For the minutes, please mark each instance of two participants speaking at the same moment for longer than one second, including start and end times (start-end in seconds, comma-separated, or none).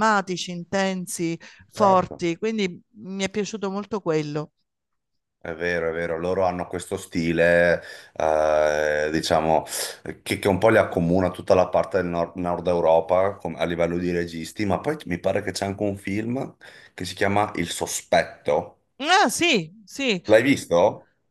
none